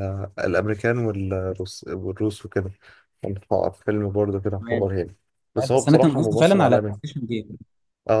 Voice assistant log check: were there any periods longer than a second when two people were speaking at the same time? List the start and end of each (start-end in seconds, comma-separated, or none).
5.7-7.0